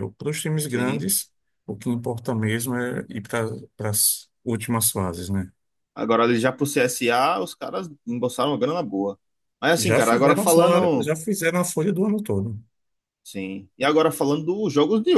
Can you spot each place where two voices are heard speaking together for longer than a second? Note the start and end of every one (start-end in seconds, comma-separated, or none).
9.8-11.1